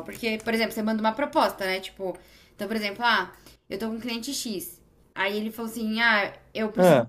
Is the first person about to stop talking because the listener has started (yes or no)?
no